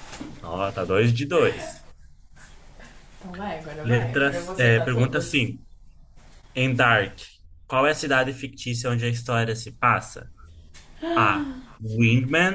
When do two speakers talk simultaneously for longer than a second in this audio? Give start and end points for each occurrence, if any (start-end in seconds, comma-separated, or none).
3.8-5.5